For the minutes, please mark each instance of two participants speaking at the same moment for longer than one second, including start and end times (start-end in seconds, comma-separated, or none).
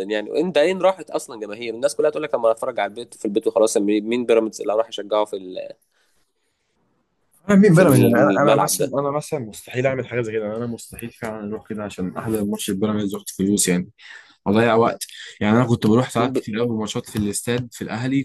7.7-8.9